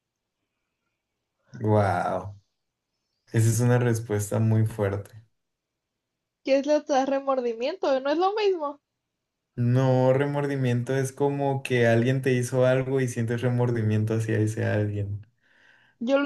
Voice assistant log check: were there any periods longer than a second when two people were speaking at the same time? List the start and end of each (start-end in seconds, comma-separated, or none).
none